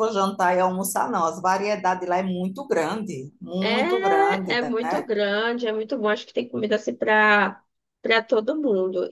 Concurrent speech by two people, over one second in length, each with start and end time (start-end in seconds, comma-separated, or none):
3.6-5.1